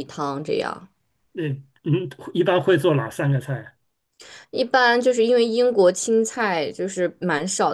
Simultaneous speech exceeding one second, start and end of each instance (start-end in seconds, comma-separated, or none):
none